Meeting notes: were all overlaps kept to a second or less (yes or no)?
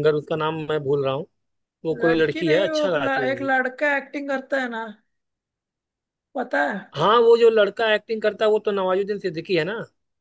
no